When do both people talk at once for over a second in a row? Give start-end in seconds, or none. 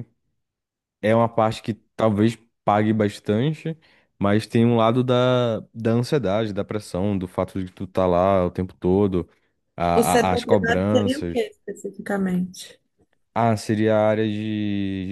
9.9-11.4